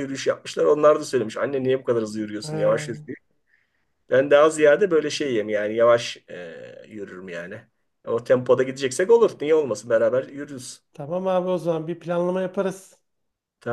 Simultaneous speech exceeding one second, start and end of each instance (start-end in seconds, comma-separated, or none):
none